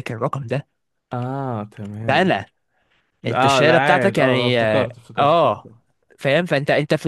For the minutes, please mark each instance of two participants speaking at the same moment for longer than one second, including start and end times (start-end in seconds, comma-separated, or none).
3.3-5.7